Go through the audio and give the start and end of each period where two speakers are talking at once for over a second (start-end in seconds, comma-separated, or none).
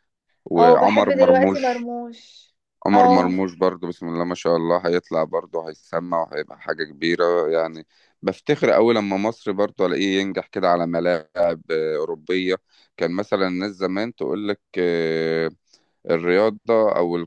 0.6-1.9